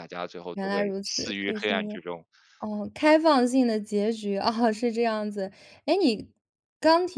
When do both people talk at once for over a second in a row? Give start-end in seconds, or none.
0.6-1.9